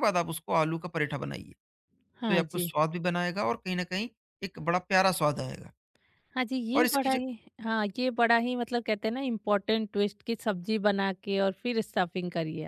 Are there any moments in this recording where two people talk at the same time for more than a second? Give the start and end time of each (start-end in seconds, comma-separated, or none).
none